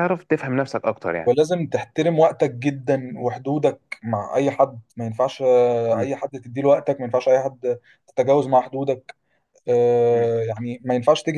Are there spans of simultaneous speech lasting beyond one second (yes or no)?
no